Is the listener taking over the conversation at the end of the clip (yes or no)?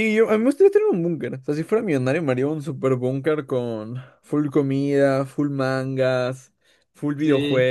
yes